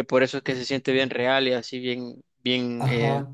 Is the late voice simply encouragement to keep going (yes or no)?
no